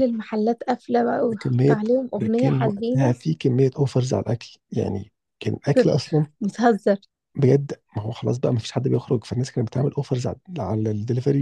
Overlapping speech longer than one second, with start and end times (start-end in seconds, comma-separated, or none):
1.2-3.1